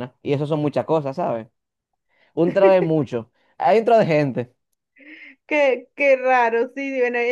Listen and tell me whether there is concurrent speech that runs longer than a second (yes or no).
no